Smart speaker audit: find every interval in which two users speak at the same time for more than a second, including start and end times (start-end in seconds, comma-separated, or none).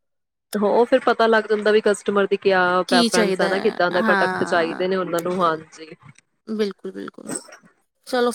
2.9-4.8